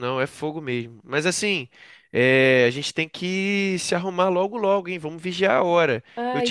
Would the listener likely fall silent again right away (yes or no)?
yes